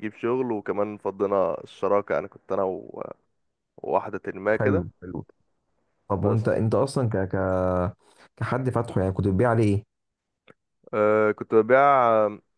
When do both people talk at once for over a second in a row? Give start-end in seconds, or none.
none